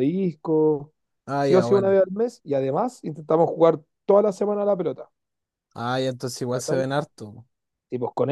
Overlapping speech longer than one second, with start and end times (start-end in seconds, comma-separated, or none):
none